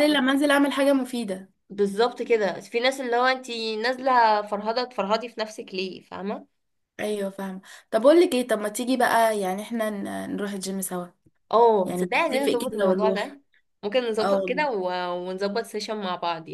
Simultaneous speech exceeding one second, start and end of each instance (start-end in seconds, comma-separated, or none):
11.8-13.4